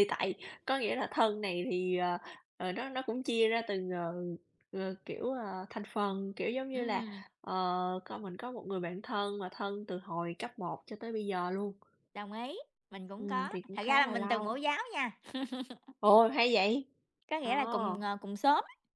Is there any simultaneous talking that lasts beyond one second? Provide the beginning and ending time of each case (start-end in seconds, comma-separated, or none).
13.2-14.5